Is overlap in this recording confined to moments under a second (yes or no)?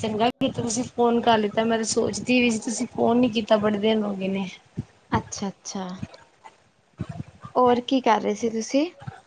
yes